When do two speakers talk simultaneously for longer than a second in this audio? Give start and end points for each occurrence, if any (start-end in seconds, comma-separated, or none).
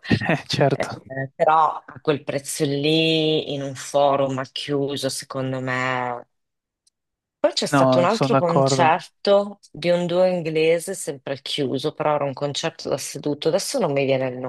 7.7-8.9